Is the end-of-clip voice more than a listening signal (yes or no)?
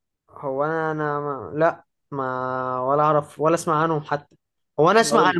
no